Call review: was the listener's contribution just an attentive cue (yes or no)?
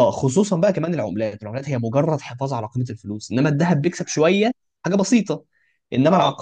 yes